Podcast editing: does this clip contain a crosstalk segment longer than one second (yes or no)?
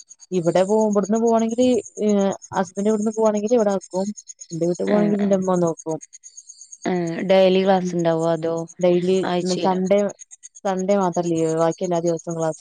no